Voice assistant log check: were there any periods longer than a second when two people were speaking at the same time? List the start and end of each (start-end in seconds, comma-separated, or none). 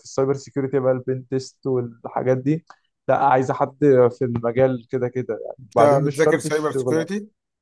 5.6-7.1